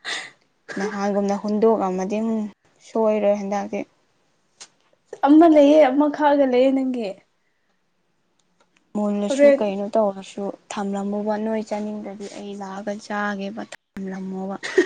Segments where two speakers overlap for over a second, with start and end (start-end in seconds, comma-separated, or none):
none